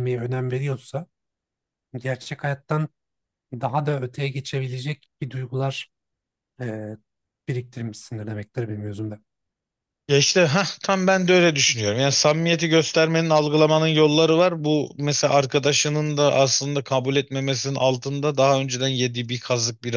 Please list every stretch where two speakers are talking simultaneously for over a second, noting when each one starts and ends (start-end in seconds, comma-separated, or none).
none